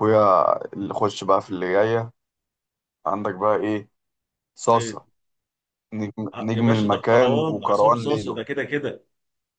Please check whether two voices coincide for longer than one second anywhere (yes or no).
yes